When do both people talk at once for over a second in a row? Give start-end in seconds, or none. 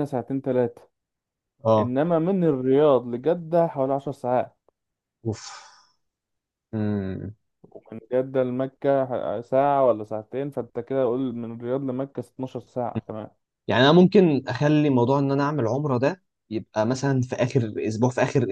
none